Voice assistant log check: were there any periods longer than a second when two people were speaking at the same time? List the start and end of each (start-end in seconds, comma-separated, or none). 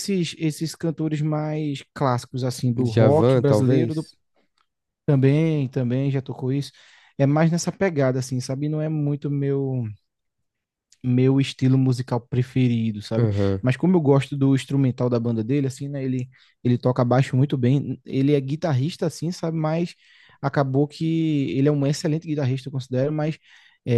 2.8-4.1